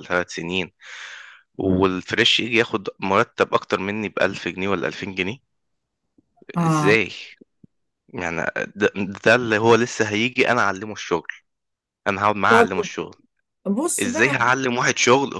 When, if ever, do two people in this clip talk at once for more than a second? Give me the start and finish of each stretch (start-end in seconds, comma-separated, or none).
none